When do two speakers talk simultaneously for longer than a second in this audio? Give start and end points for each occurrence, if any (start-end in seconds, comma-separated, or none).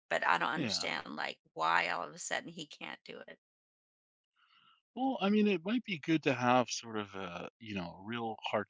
none